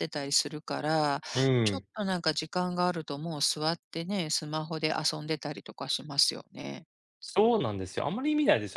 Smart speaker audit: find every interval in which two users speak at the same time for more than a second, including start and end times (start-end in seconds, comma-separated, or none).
none